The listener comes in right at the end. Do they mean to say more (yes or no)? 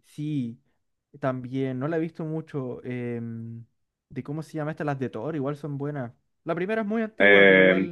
yes